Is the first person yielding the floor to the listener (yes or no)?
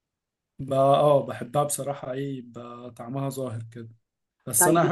no